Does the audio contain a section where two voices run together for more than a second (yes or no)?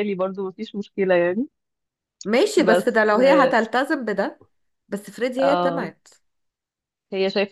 no